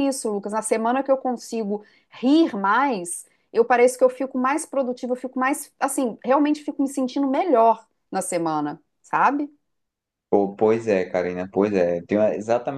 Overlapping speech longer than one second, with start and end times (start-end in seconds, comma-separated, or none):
none